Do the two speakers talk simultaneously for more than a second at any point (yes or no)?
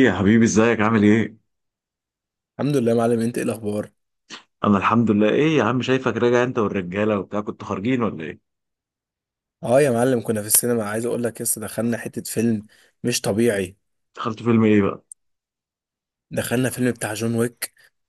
no